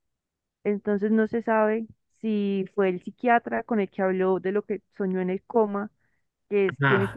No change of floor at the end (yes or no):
no